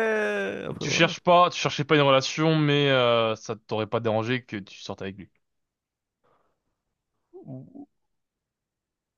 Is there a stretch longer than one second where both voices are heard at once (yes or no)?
no